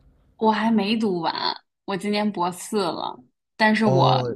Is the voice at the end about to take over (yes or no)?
no